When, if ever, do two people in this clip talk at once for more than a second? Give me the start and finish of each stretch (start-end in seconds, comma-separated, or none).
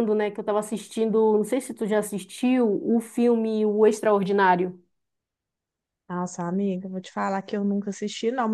none